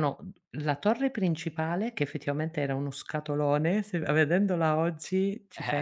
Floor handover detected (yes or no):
yes